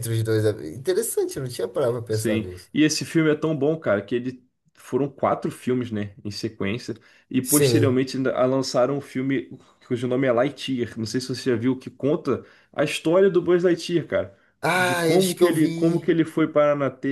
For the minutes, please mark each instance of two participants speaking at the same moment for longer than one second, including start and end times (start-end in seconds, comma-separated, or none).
14.7-16.1